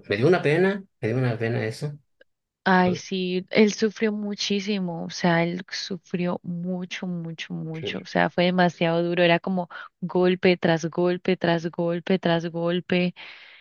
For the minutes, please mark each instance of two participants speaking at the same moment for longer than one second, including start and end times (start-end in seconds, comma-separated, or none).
none